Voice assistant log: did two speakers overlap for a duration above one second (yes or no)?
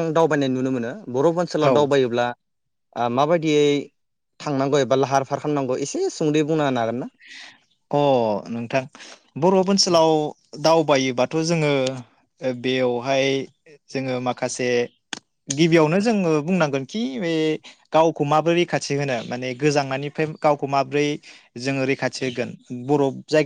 no